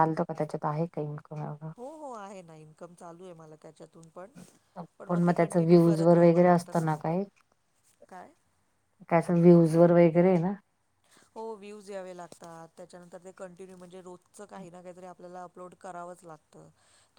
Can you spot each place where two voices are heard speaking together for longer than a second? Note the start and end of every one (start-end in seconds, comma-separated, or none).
5.4-6.8